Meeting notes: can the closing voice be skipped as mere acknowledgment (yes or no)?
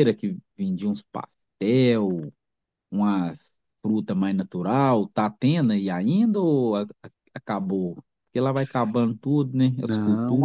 no